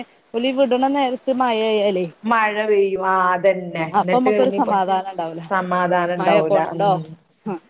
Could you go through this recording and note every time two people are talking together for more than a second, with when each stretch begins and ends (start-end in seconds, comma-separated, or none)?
none